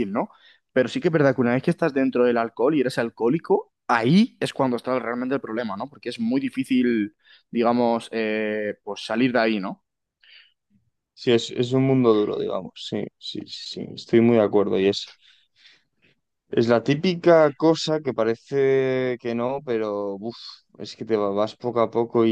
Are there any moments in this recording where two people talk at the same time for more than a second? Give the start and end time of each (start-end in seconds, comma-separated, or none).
none